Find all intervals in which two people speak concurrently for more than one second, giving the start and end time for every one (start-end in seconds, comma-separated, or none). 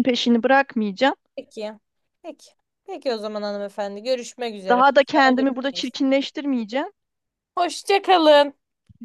4.7-6.0